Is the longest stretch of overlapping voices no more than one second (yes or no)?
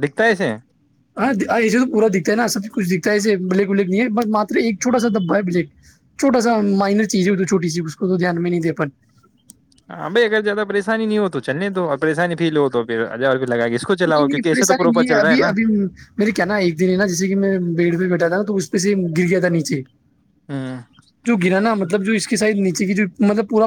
no